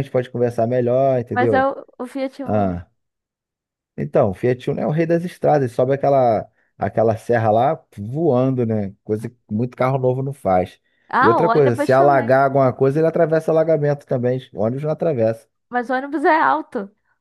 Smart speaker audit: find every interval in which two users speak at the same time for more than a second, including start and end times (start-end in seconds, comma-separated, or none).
11.2-12.4